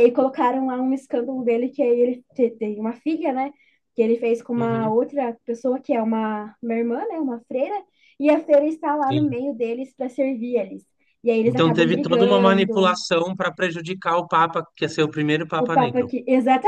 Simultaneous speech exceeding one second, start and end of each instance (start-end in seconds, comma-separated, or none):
11.4-13.0